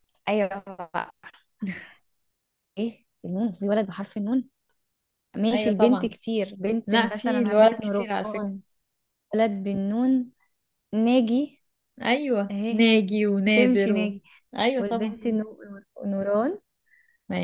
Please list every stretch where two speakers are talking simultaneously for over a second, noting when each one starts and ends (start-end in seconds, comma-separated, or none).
6.9-8.5